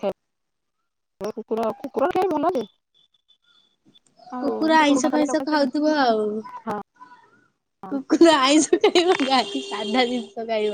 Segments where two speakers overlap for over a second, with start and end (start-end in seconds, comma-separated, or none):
4.4-5.8